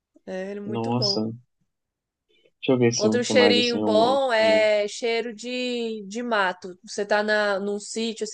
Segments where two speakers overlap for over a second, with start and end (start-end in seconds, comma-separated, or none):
3.0-4.7